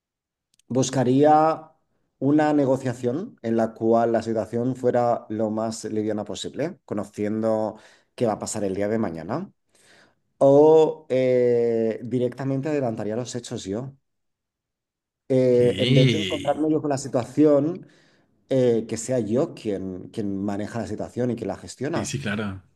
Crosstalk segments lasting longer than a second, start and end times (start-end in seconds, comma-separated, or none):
15.5-16.7